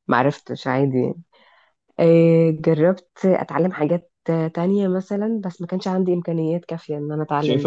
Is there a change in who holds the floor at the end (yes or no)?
yes